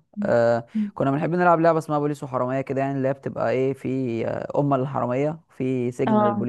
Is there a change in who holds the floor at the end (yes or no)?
no